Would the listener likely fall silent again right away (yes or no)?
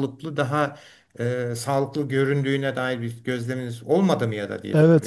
no